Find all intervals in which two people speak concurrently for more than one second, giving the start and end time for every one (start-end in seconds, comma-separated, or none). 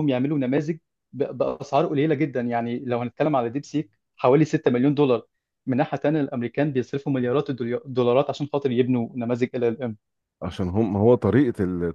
none